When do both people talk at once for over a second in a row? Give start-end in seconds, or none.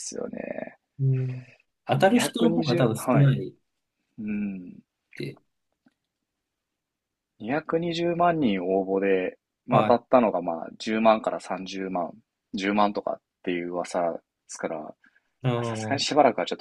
1.9-3.5